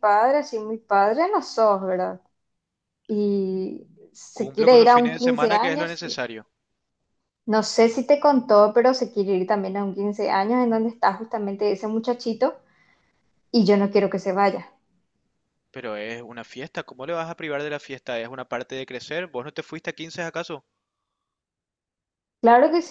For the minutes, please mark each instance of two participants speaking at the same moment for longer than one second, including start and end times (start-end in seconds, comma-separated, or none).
4.3-6.0